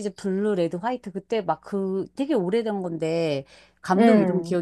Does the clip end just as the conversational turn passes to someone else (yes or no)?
no